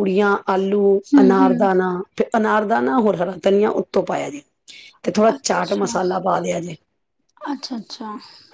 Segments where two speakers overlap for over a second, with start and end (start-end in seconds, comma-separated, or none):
none